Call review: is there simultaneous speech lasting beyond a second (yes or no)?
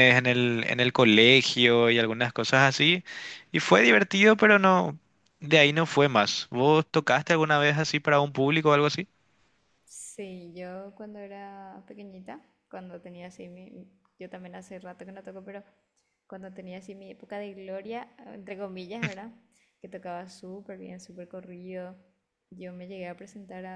no